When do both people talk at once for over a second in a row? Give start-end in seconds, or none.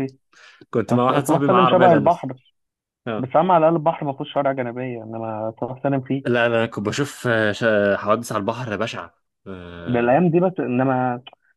0.9-2.3